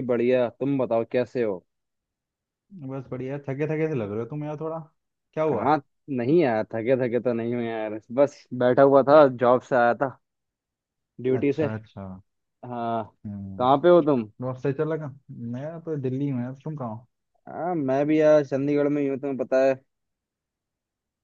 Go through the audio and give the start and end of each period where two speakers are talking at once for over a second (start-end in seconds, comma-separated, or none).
none